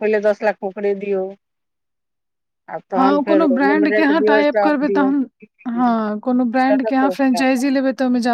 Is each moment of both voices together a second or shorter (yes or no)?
no